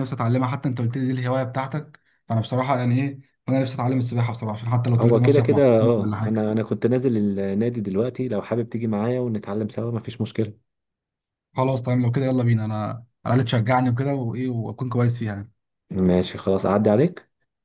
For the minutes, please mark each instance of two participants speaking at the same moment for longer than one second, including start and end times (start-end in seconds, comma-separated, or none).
5.0-6.5